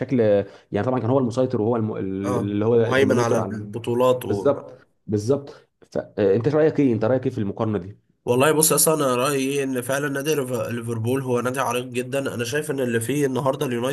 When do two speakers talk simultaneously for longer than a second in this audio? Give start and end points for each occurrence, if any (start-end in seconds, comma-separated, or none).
2.2-3.6